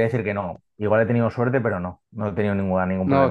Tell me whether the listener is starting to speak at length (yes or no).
yes